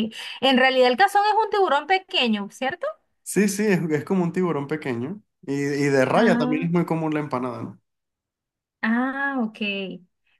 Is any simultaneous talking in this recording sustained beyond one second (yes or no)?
no